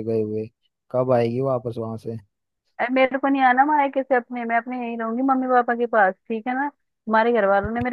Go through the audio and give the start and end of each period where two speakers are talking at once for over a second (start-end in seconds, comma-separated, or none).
none